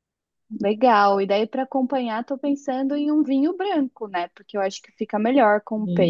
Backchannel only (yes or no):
no